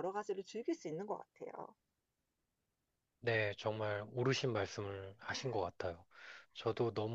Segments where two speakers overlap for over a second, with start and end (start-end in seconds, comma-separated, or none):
none